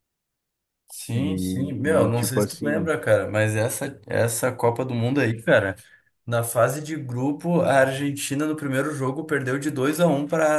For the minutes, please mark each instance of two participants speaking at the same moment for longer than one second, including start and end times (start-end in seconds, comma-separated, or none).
1.1-2.9